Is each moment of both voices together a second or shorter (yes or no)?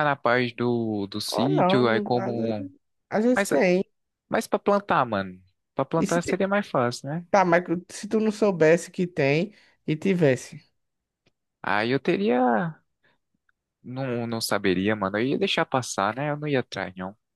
no